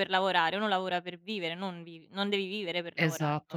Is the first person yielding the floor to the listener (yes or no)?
yes